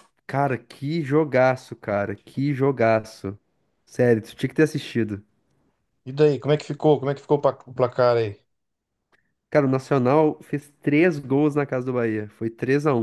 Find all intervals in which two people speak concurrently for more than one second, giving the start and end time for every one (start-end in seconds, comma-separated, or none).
none